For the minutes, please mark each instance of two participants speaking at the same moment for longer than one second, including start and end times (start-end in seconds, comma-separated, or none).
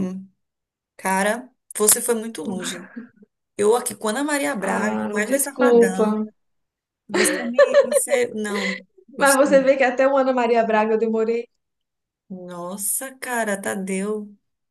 4.6-6.2